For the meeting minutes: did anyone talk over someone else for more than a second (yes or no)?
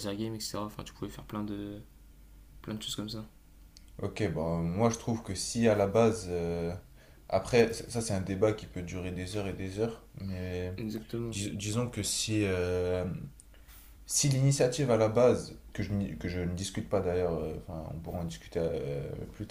no